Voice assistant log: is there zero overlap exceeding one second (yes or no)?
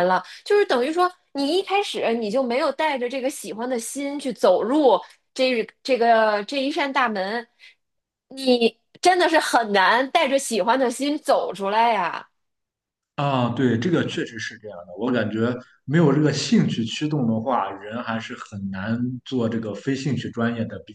yes